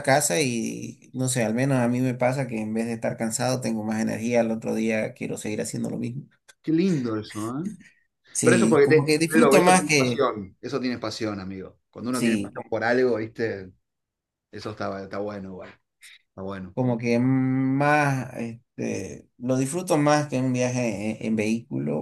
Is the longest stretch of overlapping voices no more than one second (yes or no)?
no